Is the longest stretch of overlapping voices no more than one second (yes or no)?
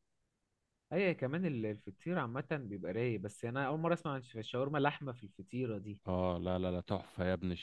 yes